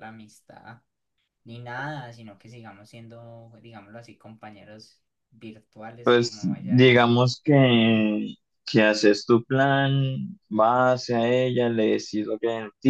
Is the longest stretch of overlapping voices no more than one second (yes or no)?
no